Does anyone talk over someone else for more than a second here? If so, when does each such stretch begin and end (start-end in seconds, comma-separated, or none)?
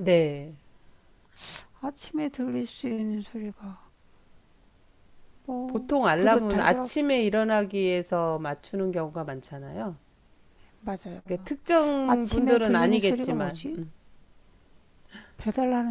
5.7-6.9, 12.0-13.6